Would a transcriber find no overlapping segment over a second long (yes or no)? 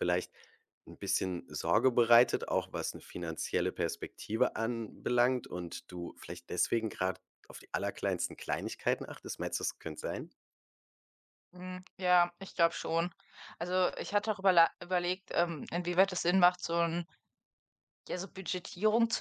yes